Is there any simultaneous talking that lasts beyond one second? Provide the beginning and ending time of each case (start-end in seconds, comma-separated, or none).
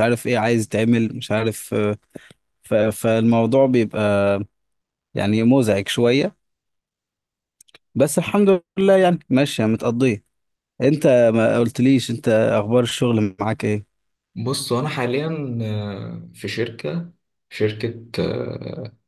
none